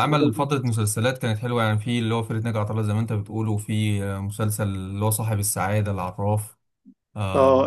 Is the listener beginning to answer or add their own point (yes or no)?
yes